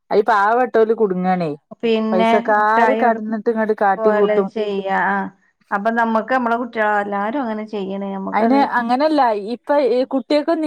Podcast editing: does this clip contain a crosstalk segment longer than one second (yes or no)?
no